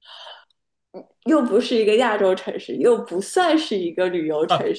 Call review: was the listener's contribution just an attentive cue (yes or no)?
no